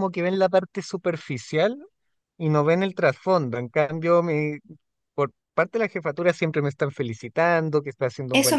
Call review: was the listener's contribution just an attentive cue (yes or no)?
no